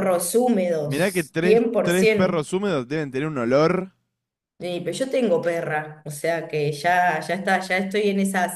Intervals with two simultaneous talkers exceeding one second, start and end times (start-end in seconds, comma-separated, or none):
0.8-2.4